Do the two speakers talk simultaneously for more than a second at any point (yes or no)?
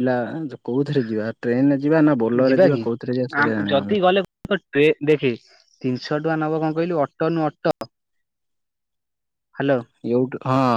no